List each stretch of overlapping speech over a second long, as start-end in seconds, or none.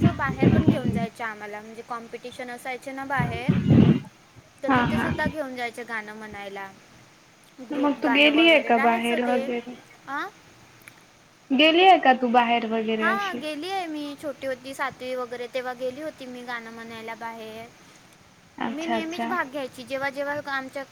7.8-9.4